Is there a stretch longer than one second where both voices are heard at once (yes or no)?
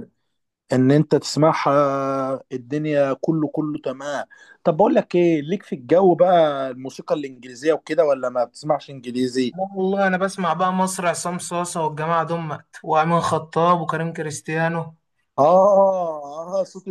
no